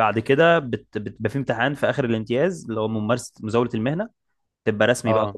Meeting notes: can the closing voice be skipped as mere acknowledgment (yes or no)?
yes